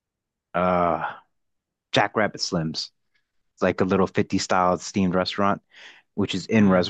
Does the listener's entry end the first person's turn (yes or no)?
no